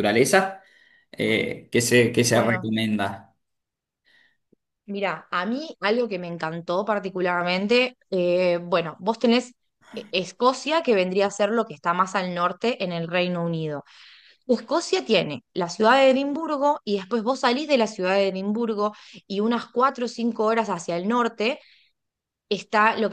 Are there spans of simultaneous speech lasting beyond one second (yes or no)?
no